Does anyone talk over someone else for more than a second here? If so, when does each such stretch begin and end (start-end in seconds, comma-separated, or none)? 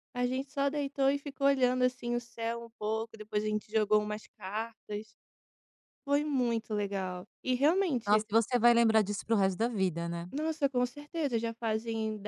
none